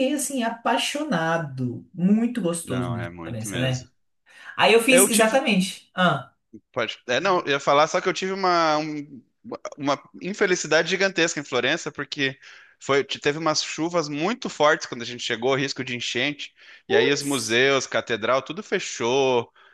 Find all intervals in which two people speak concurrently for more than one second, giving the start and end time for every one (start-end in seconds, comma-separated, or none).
2.6-3.9